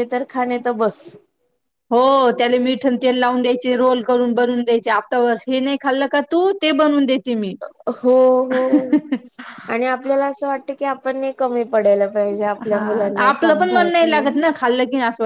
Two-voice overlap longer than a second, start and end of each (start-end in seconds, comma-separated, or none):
12.7-14.3